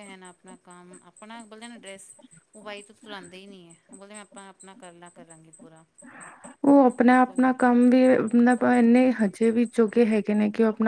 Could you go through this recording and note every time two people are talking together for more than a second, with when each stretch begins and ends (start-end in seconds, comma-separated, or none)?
none